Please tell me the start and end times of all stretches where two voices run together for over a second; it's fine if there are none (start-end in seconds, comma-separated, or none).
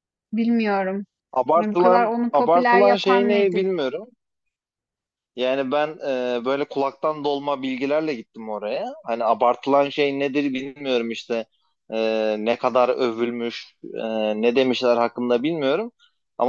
1.6-3.6